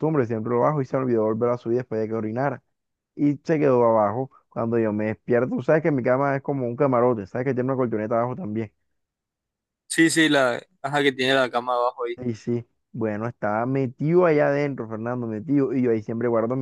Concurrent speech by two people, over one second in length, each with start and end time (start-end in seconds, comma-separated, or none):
none